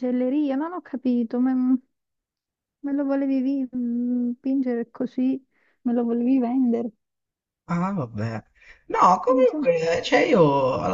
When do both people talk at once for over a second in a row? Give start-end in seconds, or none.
none